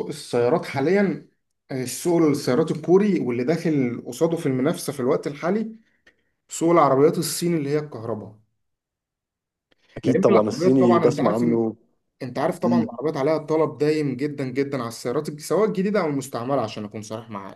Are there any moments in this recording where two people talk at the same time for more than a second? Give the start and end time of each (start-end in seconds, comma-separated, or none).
10.0-11.4